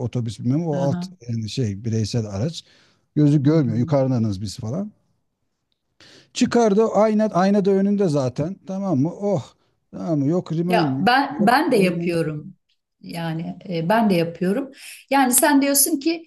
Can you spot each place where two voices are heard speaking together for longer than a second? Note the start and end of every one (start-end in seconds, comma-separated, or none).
10.7-12.2